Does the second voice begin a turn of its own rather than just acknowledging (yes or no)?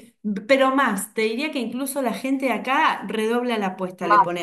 no